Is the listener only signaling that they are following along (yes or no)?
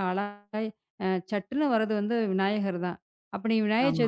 yes